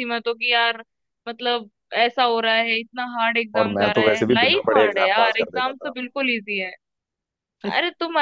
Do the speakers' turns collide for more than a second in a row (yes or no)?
yes